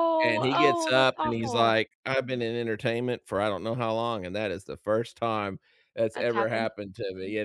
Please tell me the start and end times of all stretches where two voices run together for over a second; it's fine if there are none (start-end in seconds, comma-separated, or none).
0.5-1.8